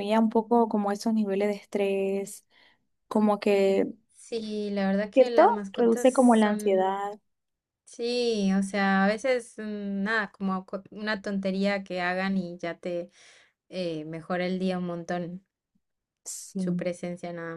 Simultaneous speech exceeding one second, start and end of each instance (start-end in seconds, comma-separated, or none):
5.1-7.0